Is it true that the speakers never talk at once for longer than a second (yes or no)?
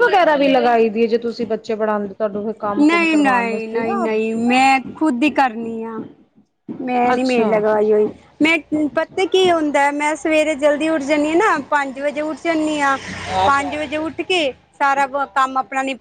no